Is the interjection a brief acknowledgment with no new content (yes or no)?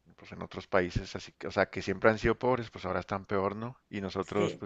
yes